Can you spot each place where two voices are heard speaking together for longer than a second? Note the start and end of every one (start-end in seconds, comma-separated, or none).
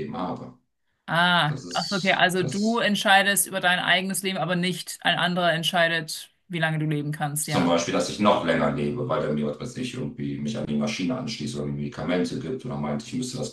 1.5-2.9